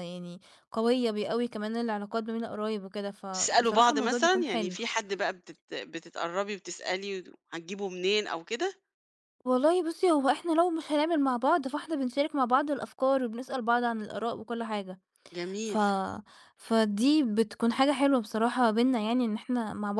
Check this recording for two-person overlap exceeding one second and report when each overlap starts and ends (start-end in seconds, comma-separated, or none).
3.3-4.8